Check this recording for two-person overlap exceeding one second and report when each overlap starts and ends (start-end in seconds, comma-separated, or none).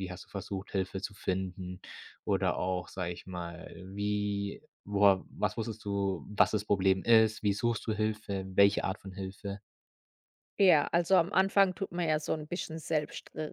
none